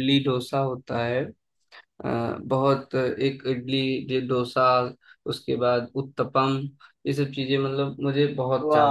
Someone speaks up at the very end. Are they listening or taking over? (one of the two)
taking over